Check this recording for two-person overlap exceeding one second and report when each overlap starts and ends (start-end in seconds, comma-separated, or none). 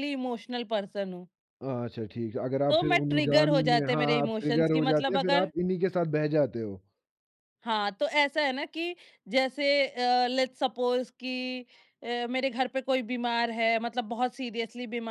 2.7-5.5